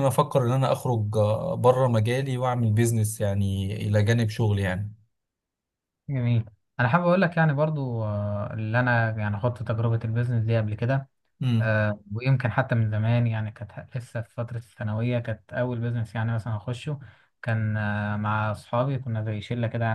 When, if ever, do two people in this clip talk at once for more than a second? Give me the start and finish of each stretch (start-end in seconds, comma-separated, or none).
none